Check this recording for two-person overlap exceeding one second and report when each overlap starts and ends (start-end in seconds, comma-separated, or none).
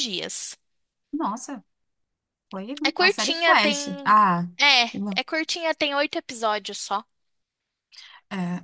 2.8-4.2